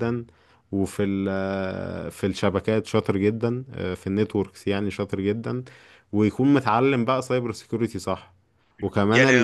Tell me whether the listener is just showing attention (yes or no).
no